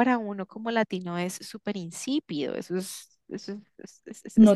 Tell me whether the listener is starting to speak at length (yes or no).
yes